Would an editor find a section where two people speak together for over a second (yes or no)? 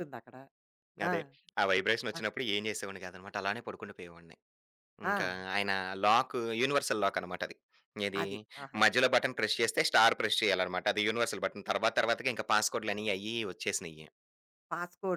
no